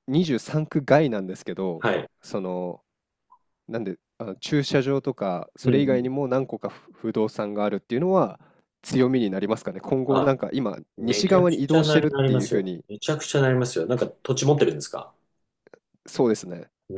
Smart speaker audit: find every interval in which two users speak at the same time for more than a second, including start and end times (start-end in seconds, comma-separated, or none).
11.0-12.8